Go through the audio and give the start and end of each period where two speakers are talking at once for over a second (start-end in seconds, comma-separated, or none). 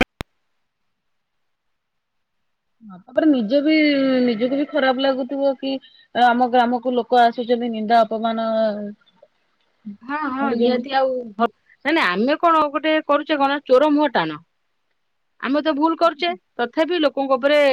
none